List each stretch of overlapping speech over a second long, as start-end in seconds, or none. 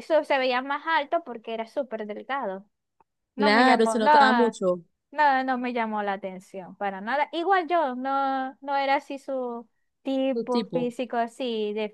3.4-4.6